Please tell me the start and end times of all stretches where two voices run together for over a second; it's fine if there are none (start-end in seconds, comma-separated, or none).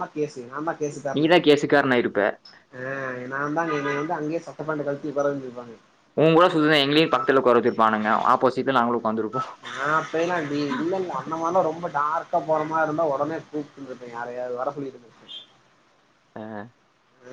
none